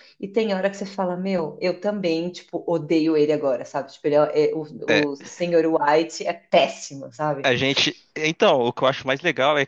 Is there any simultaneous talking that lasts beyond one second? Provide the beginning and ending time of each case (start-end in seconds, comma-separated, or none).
none